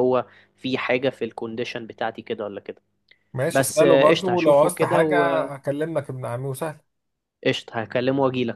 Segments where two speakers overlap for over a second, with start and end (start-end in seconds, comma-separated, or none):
3.5-5.2